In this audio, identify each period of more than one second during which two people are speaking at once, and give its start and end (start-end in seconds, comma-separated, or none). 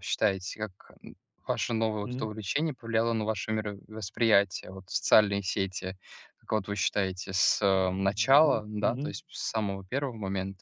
7.7-9.2